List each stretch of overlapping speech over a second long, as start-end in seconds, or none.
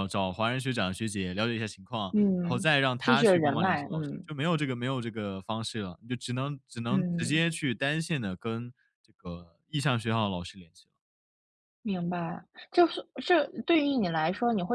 2.4-4.3